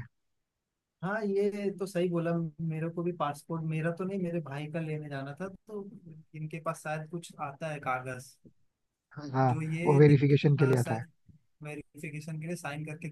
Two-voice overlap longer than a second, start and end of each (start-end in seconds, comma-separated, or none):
9.5-11.0